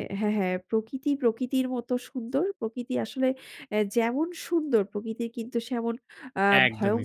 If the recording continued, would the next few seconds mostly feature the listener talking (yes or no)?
yes